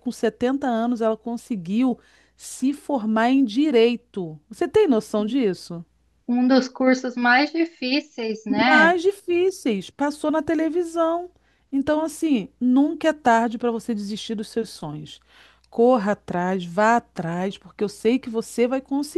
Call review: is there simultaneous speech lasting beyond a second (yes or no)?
no